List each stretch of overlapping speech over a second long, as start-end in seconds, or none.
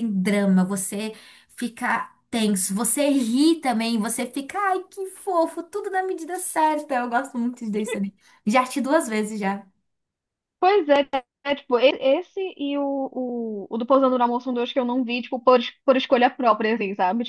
none